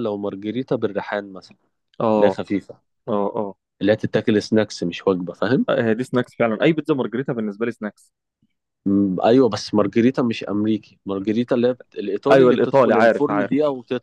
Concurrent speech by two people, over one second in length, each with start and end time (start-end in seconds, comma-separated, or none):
12.3-13.5